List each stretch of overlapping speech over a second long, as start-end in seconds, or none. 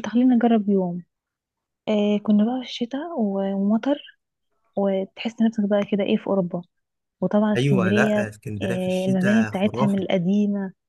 7.6-10.1